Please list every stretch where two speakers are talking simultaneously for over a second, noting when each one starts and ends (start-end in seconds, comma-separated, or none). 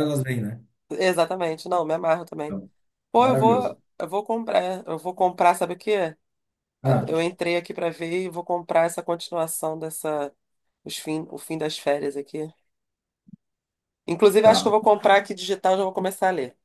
none